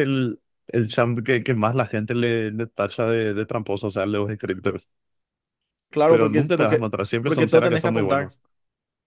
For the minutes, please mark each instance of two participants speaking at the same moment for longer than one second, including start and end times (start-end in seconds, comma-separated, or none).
6.0-8.4